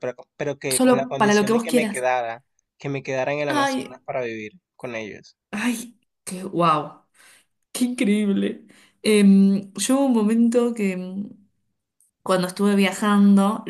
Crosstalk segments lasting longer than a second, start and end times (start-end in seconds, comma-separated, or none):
0.7-2.0